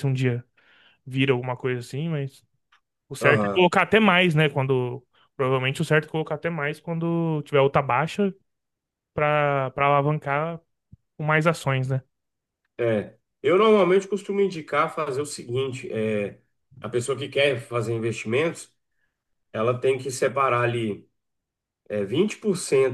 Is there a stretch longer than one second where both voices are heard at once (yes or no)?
no